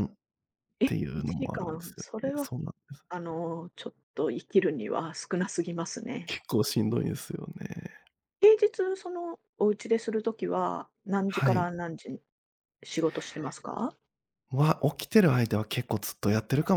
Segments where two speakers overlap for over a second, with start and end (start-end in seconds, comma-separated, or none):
0.9-2.5